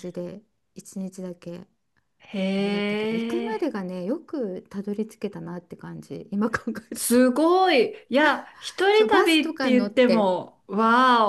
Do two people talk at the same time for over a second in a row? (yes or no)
yes